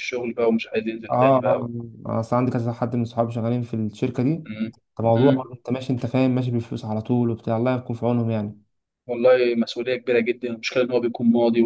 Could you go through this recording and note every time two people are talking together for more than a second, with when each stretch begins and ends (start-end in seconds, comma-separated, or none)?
none